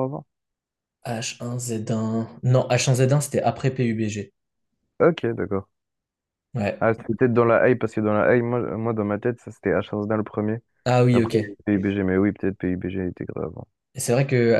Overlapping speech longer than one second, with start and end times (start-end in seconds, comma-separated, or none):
none